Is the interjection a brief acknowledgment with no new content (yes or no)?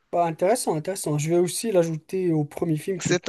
no